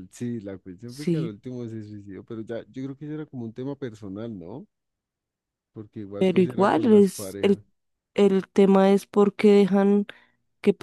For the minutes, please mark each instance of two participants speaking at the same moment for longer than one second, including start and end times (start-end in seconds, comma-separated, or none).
6.2-7.6